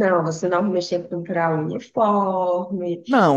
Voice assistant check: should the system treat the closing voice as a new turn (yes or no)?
yes